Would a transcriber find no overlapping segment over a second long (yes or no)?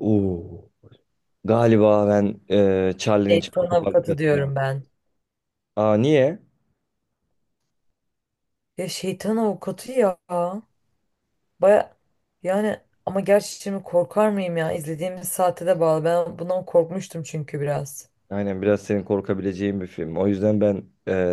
no